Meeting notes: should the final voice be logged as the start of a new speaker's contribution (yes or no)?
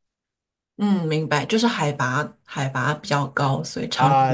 yes